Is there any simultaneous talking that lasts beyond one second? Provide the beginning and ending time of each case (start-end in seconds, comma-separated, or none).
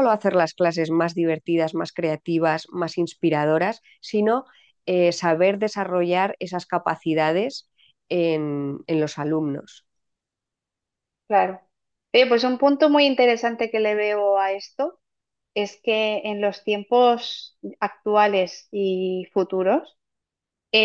none